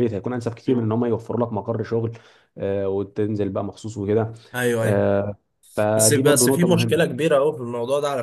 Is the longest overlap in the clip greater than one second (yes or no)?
yes